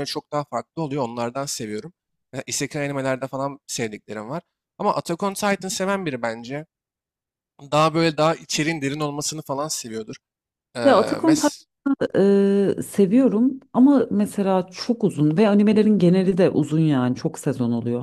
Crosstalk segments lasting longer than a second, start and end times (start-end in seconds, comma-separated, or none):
none